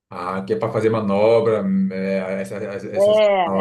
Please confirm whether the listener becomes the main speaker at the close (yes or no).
yes